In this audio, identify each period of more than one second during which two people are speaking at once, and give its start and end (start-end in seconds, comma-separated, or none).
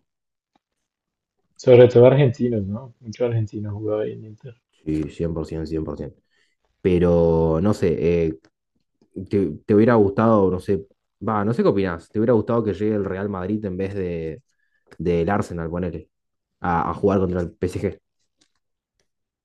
none